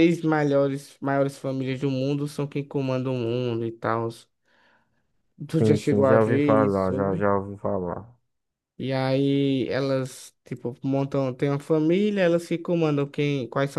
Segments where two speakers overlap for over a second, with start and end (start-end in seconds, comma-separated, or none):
5.6-7.3